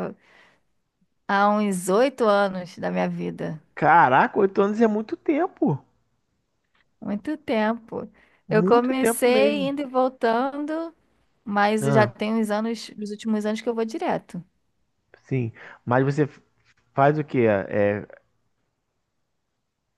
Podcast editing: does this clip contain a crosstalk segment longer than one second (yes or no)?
yes